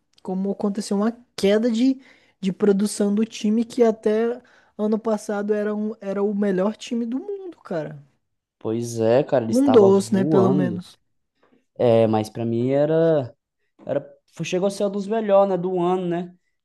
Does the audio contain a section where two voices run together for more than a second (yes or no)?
yes